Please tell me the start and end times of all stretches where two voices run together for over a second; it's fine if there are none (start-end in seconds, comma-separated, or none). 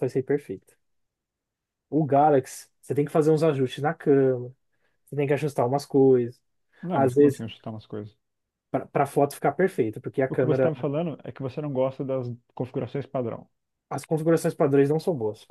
none